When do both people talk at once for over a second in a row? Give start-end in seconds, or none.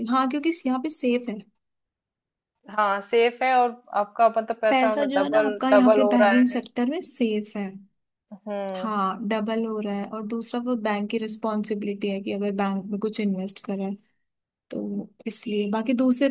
4.7-6.6